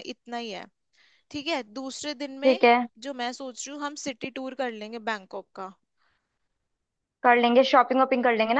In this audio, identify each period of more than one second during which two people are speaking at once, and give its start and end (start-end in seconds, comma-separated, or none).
none